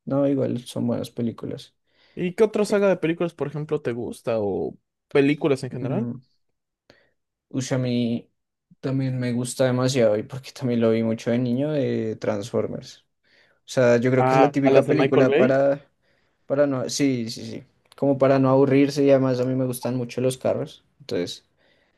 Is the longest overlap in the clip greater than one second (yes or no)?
yes